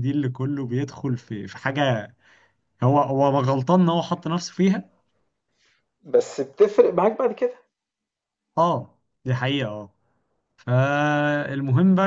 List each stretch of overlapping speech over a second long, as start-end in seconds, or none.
none